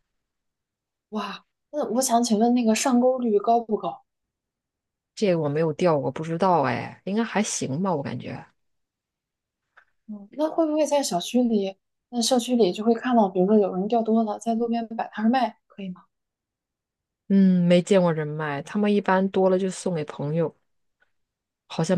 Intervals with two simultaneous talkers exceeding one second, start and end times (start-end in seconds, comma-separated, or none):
none